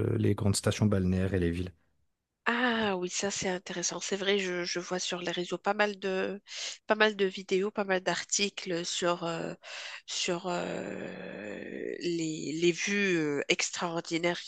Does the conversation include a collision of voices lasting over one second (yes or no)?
no